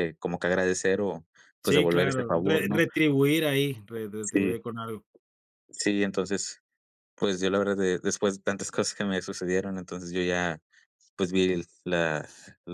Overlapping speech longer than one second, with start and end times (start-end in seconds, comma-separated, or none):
1.6-2.9